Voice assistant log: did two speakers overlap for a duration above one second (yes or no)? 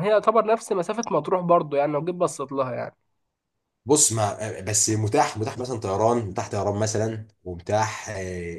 no